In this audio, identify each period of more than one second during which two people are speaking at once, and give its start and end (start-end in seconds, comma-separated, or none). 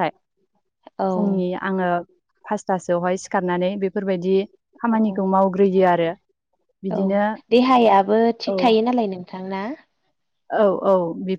none